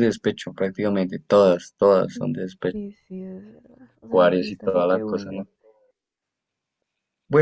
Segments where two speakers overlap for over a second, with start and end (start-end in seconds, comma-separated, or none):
4.1-5.5